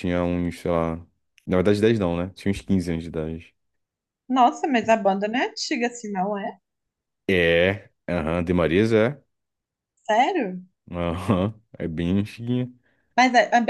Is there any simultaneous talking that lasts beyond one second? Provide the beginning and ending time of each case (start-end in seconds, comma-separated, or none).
none